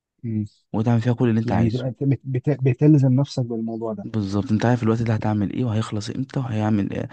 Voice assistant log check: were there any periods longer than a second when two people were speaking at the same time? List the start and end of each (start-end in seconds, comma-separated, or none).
none